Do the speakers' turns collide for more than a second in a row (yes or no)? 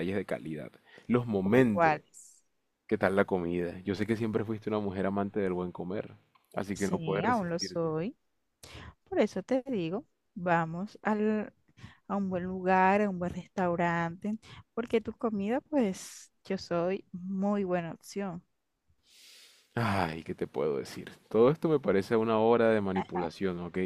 yes